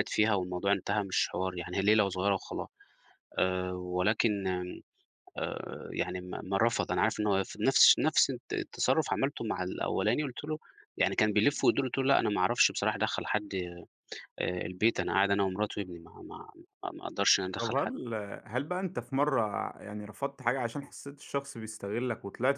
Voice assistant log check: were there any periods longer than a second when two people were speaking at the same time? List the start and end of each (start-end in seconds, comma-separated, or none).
none